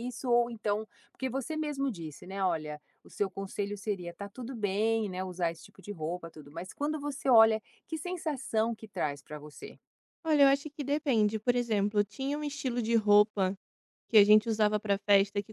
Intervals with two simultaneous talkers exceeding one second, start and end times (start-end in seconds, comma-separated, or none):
none